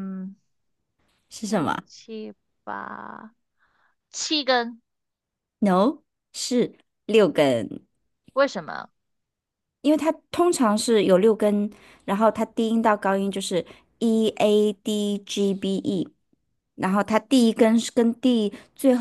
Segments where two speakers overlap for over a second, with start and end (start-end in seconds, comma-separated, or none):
none